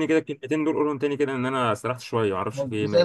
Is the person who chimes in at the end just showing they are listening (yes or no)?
no